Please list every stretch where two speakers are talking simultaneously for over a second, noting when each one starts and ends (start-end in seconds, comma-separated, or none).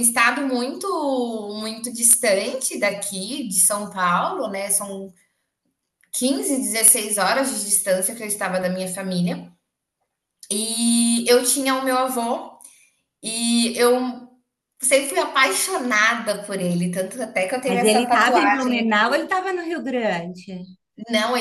17.6-18.9